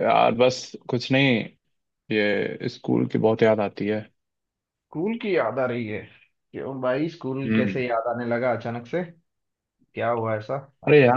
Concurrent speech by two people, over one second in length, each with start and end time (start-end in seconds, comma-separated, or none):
none